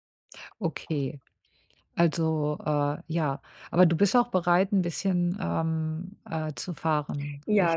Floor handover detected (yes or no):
yes